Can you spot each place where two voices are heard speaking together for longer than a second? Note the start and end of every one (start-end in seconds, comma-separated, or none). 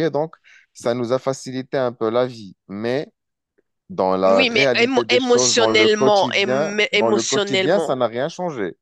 4.2-8.0